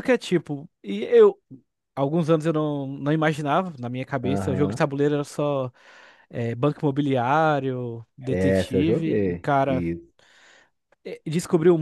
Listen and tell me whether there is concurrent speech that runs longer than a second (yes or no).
yes